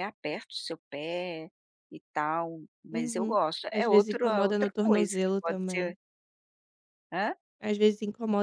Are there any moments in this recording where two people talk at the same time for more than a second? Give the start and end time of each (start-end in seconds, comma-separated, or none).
2.9-5.9